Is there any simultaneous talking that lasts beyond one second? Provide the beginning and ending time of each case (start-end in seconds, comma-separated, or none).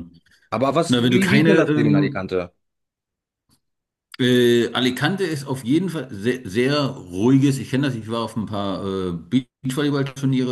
0.9-2.3